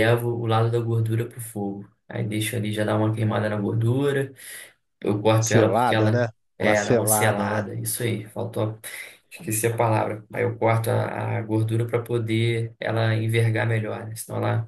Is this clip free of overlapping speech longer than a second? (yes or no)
no